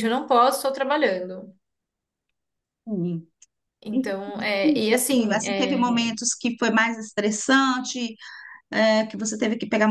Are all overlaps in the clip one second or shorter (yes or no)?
no